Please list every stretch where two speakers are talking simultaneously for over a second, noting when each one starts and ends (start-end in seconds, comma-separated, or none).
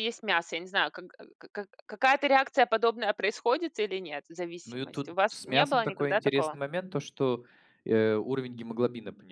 4.6-6.6